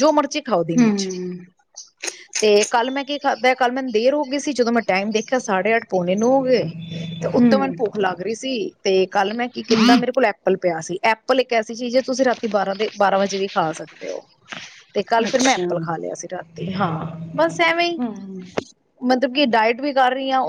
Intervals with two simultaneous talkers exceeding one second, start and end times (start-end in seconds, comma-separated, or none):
none